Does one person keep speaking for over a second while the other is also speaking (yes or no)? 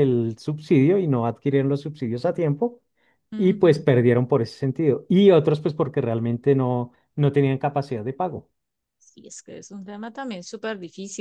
no